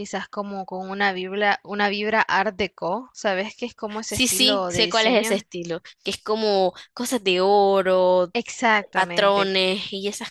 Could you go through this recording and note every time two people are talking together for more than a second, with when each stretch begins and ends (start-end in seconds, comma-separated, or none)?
4.1-5.4